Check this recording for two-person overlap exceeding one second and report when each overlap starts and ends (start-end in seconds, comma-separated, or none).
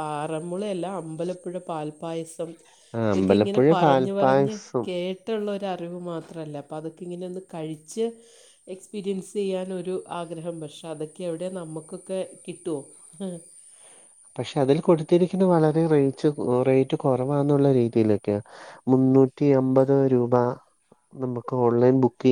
3.1-4.8